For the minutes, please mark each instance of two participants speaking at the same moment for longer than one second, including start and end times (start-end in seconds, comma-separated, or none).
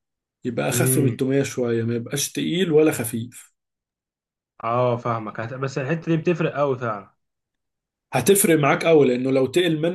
none